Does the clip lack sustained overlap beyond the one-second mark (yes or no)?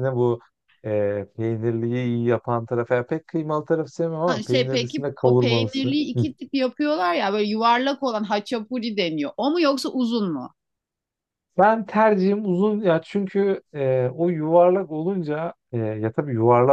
no